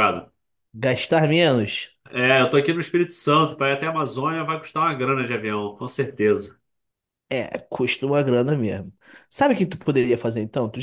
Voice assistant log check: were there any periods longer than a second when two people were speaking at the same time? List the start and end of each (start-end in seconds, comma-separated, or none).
none